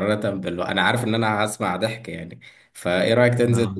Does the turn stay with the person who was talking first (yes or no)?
yes